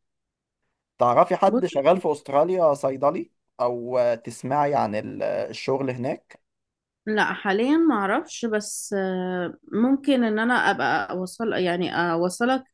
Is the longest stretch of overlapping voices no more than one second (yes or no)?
yes